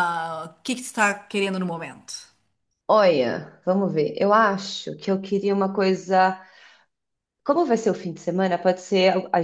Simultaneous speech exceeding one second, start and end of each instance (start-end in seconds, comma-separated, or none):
none